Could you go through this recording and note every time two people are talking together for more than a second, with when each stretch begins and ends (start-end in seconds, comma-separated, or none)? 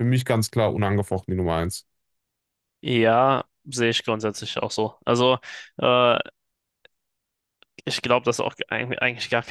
none